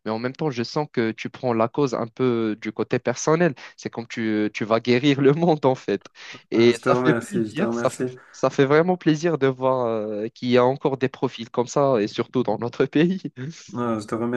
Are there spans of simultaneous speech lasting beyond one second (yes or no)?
yes